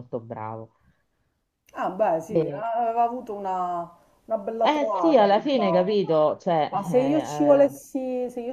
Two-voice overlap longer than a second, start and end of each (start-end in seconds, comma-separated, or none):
4.6-6.0